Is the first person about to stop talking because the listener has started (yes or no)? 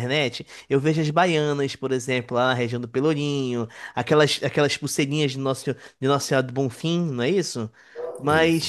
no